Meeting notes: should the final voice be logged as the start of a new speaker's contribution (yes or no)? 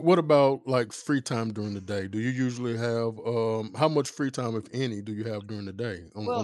yes